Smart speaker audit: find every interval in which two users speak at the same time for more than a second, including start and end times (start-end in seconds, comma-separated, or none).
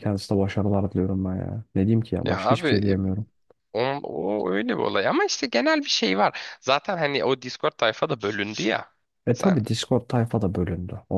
none